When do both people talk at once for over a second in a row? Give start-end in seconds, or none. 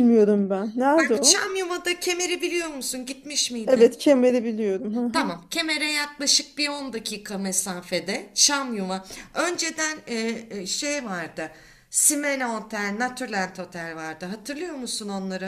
none